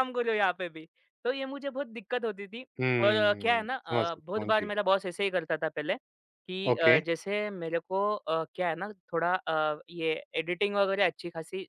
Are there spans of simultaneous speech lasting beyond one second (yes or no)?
yes